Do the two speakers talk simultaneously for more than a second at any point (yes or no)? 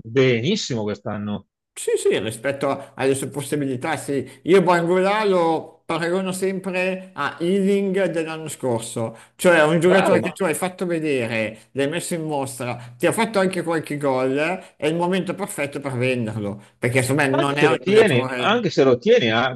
yes